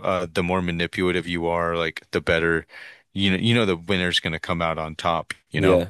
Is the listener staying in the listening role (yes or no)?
yes